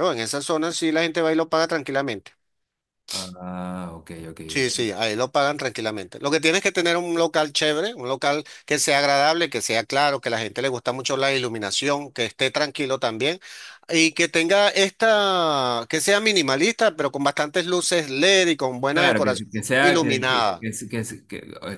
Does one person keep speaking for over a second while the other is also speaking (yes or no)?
yes